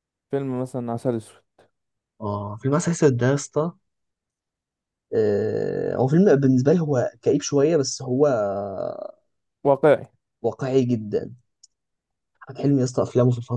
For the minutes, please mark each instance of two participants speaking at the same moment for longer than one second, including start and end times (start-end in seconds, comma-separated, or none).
none